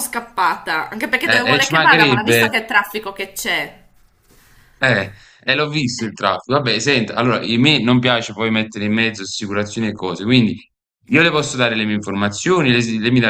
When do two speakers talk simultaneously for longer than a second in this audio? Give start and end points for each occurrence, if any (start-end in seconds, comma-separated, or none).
1.2-2.5